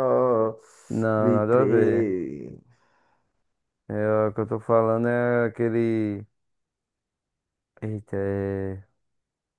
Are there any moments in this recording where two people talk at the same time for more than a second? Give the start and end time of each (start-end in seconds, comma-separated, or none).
0.9-2.1